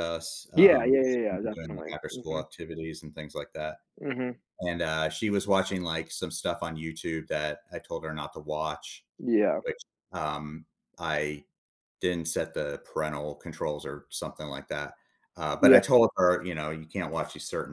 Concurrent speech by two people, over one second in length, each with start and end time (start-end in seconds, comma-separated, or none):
0.5-2.4